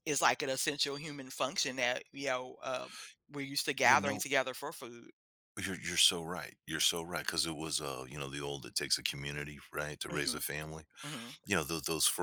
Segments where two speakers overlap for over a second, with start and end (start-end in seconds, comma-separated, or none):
none